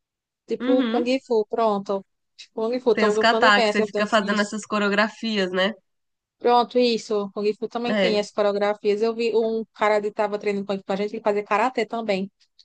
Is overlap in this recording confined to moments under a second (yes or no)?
no